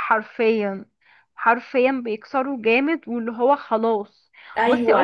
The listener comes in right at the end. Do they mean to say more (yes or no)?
yes